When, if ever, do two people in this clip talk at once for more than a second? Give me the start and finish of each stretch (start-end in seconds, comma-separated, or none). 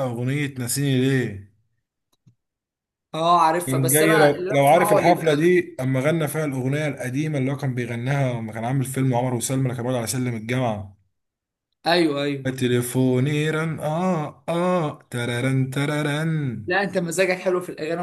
3.7-5.4